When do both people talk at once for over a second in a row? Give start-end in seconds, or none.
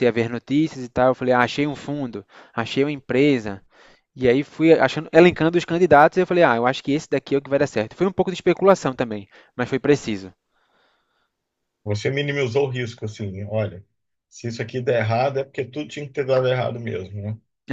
none